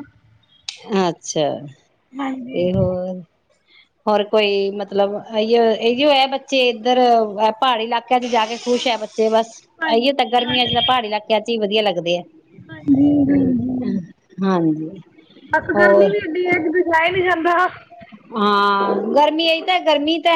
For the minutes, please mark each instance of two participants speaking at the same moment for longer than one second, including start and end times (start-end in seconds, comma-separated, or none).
none